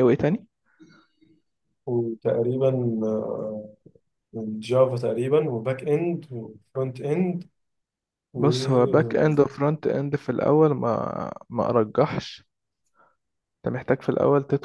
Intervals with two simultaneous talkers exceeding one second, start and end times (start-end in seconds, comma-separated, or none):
none